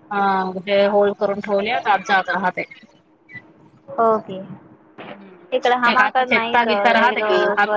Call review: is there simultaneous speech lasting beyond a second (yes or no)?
yes